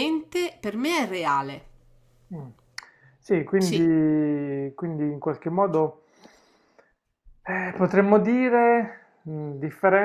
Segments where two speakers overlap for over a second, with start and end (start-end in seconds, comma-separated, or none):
none